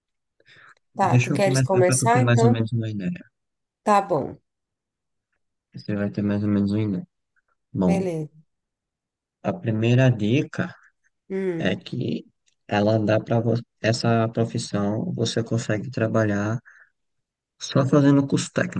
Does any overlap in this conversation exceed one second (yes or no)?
yes